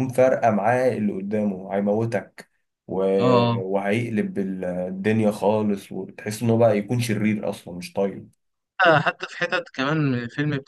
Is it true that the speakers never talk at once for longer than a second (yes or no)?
yes